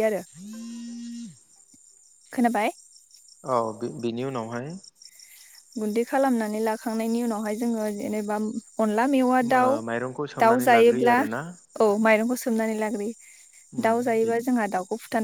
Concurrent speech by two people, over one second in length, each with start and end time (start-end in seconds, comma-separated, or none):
9.7-11.4